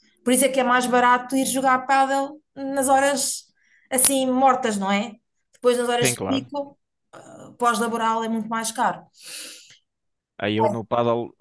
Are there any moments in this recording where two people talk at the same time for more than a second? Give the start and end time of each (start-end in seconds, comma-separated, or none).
none